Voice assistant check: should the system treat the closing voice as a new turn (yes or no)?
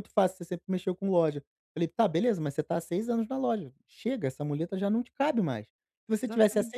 no